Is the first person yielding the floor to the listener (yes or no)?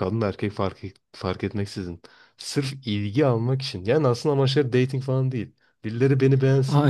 no